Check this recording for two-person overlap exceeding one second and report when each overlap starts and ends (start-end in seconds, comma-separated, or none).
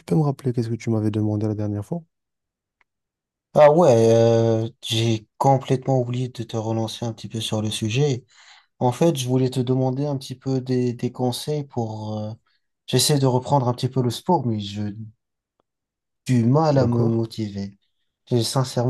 none